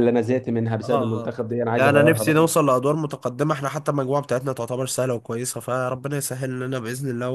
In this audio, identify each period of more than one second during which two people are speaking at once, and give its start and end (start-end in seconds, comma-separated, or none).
0.8-2.5